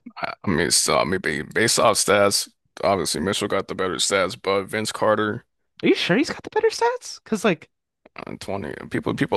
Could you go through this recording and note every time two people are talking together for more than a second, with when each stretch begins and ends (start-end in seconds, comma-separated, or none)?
none